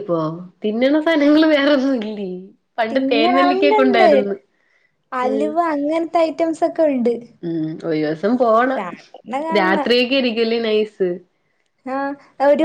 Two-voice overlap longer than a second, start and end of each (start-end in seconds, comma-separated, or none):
2.9-4.1